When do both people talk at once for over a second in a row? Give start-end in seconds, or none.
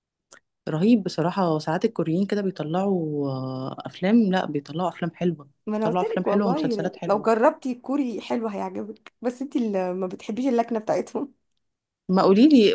5.7-7.3